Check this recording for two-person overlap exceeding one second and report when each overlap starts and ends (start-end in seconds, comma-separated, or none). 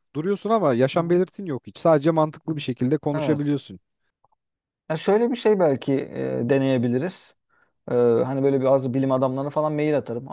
none